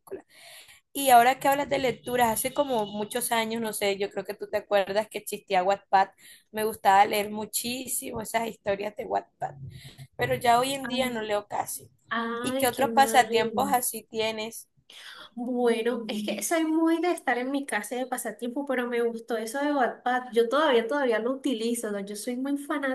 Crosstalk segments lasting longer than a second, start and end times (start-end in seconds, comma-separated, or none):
12.4-13.7